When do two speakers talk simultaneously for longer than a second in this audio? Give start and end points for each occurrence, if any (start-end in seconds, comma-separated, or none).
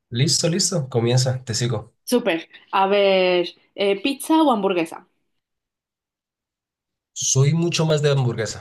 none